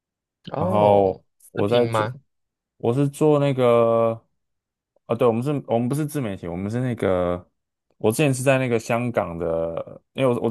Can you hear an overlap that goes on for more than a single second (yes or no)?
yes